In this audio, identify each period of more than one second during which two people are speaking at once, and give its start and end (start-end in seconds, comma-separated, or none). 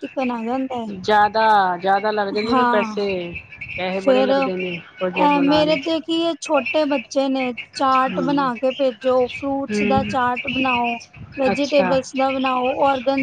4.0-5.9